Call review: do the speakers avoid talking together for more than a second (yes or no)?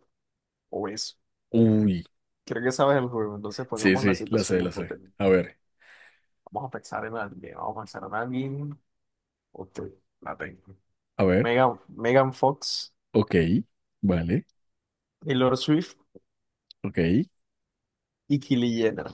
no